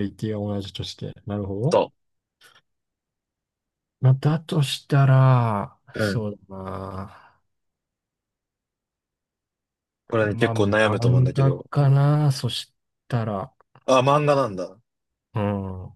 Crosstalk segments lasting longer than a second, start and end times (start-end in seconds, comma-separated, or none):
10.2-11.7